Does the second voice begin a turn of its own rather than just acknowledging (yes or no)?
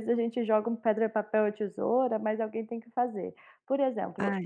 no